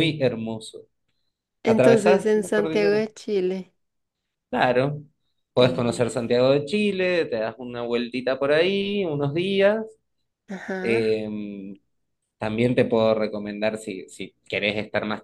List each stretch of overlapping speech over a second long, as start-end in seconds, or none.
1.6-3.0